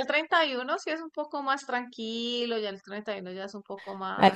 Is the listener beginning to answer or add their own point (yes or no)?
yes